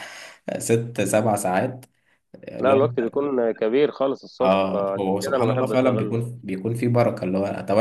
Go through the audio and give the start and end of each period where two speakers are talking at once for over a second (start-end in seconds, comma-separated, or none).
4.4-6.2